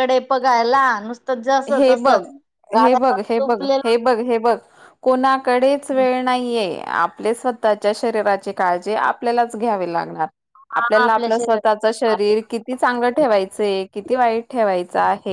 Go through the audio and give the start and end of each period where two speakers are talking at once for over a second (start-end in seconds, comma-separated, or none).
10.8-12.3